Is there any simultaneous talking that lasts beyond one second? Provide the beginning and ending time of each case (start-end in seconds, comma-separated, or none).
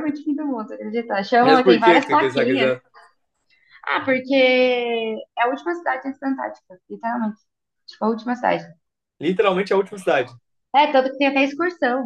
1.4-2.7